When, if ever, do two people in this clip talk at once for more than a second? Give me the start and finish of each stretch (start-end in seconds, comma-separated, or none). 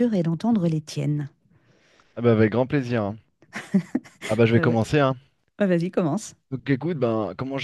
none